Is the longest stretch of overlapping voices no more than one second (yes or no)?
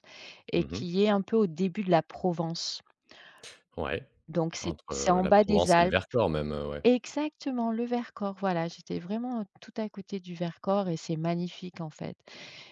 no